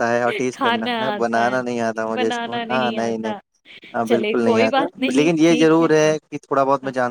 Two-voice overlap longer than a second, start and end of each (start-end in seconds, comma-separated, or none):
1.1-3.3, 4.1-5.8